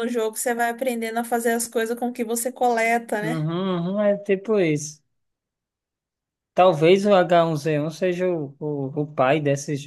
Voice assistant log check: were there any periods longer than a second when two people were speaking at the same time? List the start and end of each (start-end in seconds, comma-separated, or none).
none